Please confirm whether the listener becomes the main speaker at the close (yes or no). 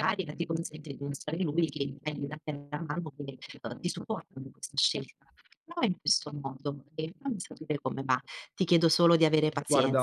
no